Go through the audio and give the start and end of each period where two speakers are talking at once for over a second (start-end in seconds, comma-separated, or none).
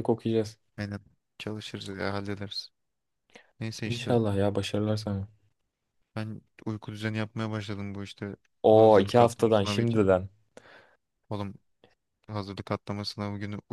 8.6-10.0